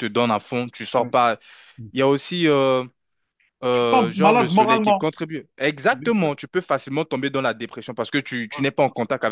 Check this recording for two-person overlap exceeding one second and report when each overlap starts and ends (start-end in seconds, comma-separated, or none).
3.7-5.0